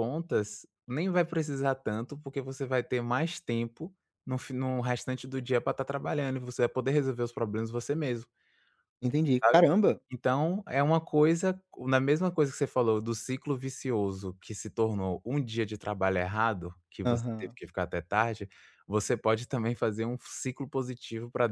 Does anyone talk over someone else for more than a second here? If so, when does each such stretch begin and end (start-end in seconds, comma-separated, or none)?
none